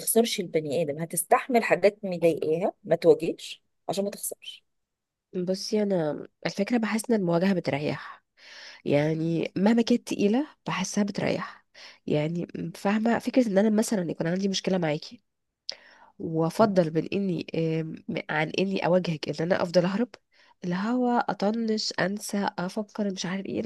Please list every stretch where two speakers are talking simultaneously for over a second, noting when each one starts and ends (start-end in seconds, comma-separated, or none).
none